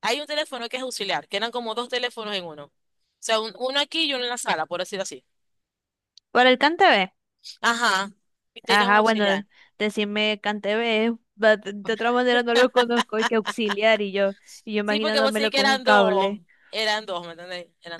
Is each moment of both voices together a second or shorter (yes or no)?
no